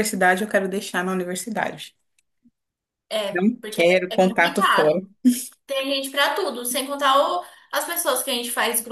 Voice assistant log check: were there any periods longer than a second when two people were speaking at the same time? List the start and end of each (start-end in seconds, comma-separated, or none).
3.3-4.9